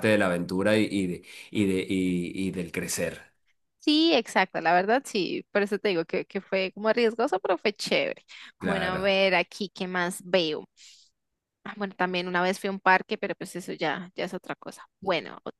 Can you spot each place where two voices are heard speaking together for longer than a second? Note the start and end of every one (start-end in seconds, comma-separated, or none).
none